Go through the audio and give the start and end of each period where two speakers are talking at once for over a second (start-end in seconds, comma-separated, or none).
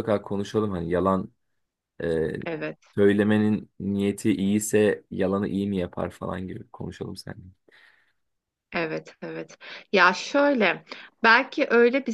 none